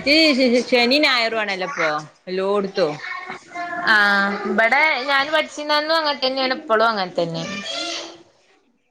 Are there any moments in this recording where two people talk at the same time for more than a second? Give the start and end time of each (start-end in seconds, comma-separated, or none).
none